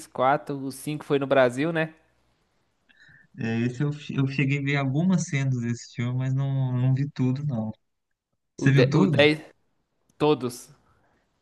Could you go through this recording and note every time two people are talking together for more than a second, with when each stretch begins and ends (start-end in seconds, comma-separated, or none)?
none